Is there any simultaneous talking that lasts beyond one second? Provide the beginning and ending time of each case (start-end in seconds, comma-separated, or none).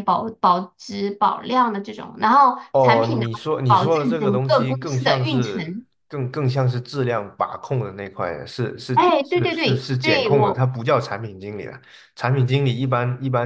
2.7-5.8, 8.9-10.7